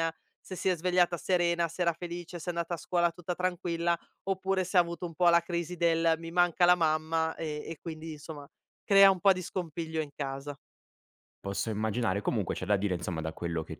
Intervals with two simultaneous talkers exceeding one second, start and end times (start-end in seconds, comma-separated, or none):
none